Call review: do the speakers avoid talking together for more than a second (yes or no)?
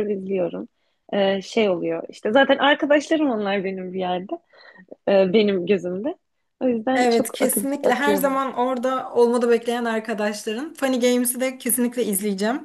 no